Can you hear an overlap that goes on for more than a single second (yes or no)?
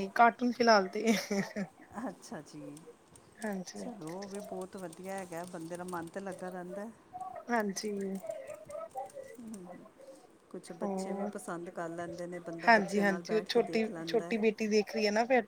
yes